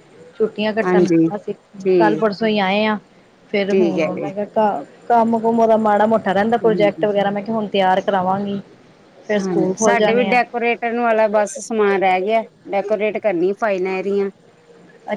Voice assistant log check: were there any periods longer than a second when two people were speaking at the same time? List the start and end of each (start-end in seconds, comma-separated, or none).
none